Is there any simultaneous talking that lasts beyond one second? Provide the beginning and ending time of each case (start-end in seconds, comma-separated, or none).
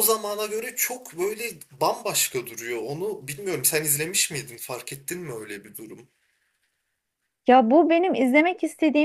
none